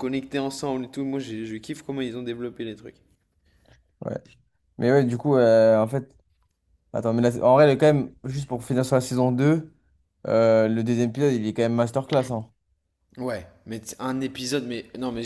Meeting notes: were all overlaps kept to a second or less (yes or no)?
yes